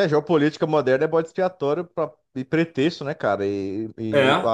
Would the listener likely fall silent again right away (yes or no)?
yes